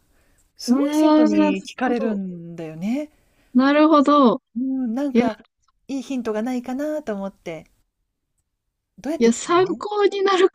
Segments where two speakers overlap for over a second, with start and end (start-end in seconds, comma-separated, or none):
0.7-2.2